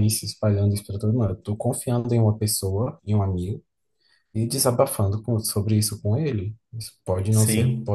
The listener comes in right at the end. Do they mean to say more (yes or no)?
no